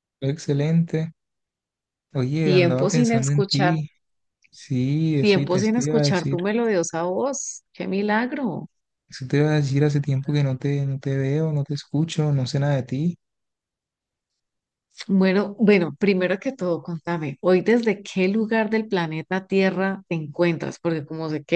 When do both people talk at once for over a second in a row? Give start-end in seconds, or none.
2.4-3.8, 5.2-6.4